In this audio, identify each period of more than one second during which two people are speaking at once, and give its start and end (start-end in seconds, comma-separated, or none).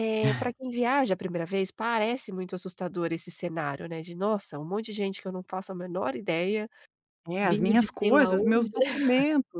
7.4-8.7